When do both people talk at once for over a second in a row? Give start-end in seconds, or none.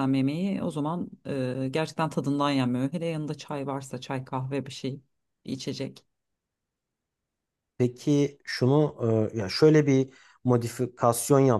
none